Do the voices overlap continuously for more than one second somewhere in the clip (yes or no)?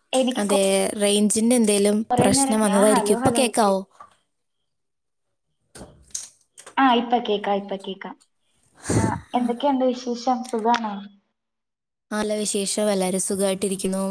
yes